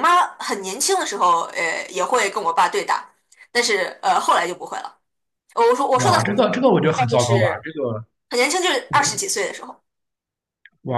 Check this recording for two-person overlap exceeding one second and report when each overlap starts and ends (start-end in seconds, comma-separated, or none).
6.0-7.7